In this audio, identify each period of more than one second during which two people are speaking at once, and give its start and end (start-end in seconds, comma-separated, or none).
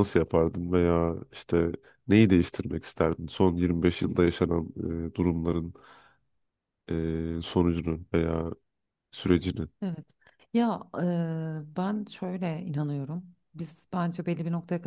none